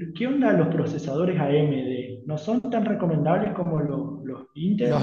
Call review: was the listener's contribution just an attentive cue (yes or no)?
no